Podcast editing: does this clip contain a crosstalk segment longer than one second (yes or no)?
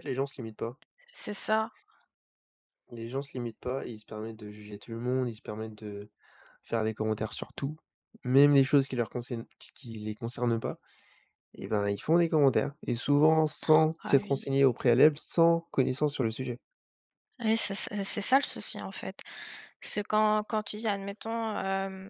no